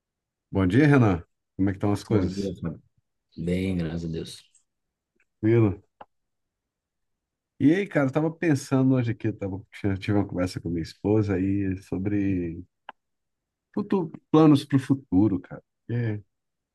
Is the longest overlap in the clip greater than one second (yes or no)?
no